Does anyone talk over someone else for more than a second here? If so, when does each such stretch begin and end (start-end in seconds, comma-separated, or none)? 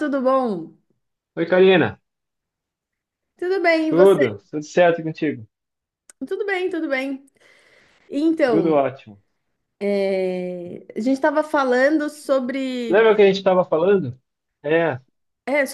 none